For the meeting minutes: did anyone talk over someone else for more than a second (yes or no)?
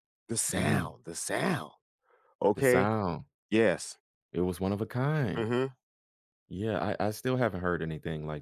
no